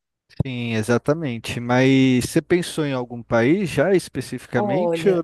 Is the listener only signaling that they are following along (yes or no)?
no